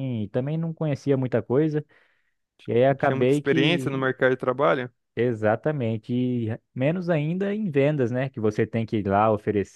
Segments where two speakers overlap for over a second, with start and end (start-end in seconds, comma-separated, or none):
2.9-4.2